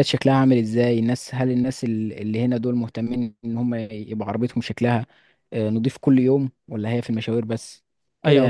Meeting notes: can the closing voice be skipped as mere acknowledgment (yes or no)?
no